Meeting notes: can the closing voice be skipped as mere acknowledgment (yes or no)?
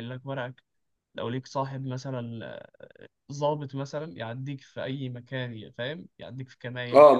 no